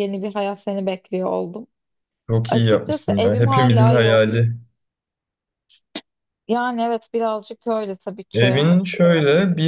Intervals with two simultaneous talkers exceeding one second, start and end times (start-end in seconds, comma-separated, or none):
2.5-4.4